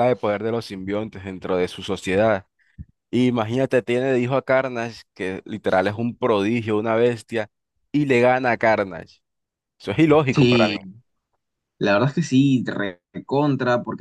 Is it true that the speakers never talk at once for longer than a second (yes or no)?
yes